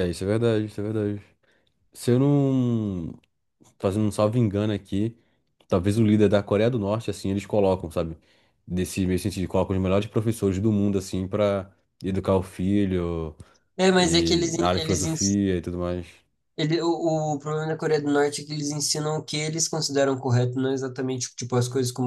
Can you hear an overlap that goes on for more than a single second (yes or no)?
yes